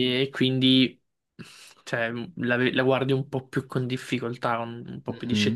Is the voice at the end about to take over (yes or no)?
yes